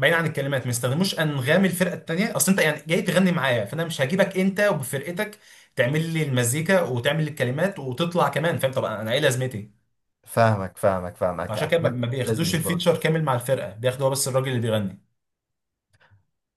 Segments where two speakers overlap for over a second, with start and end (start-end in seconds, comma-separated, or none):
11.5-12.9